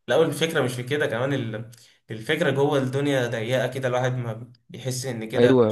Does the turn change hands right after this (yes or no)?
yes